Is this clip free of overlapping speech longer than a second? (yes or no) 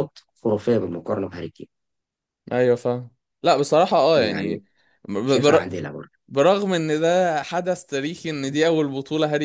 yes